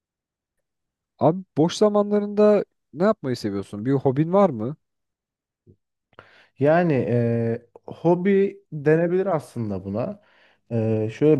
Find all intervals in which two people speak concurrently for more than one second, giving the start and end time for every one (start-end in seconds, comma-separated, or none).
none